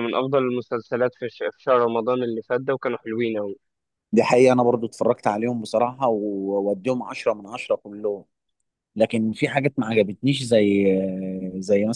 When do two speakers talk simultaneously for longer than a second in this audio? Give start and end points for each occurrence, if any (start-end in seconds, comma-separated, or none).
none